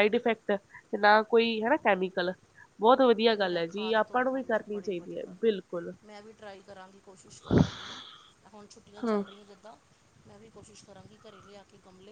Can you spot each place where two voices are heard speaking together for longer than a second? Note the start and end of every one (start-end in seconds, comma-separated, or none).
3.4-5.5